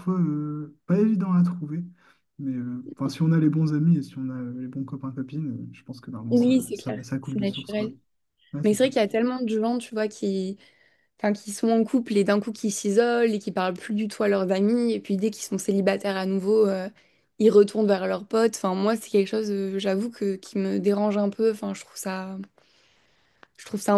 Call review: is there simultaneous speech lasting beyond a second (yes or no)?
yes